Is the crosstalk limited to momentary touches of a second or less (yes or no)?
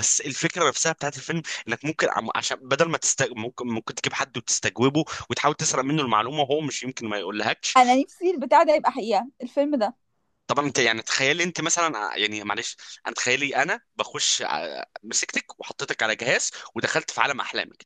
yes